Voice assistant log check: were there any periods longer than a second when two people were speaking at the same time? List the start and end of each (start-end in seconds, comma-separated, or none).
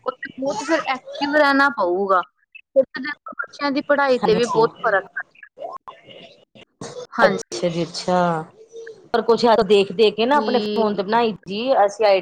none